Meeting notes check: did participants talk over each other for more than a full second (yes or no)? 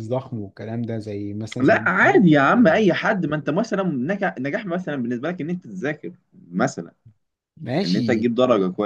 yes